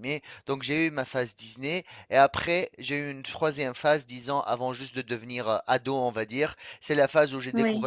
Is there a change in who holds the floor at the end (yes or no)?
no